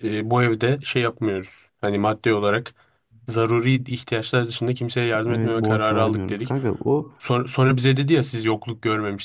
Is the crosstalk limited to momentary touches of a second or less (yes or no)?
no